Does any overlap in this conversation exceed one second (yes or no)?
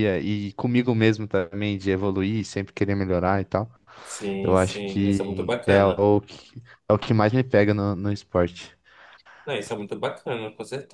yes